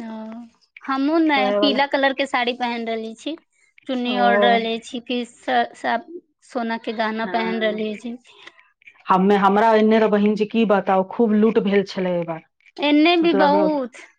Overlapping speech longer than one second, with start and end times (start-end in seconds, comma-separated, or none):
none